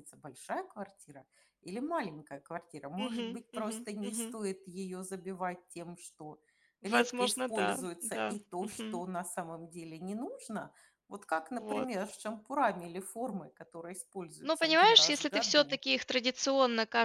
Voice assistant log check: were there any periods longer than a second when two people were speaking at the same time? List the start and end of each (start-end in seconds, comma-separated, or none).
3.0-4.4, 6.8-9.0, 14.4-15.8